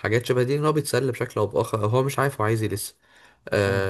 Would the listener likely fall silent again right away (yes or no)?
yes